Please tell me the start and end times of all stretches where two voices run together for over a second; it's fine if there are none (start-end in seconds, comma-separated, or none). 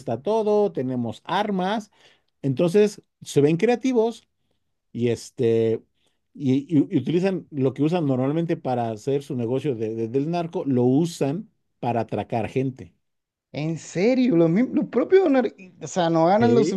none